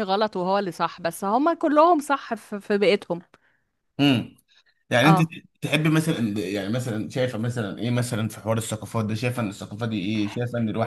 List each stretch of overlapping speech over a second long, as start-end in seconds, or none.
none